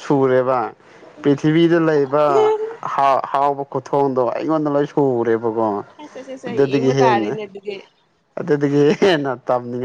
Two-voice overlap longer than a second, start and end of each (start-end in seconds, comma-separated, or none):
none